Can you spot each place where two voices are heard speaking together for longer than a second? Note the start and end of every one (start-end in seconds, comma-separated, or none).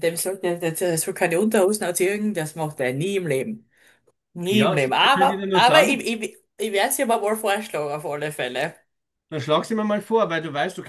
4.5-6.0